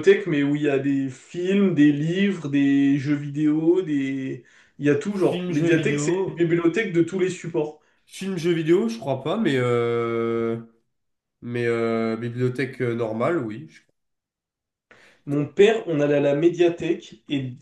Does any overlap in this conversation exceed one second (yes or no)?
yes